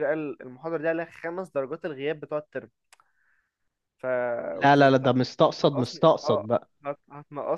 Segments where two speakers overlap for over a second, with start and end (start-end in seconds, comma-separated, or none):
4.6-6.5